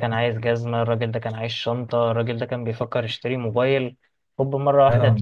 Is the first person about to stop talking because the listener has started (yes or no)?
yes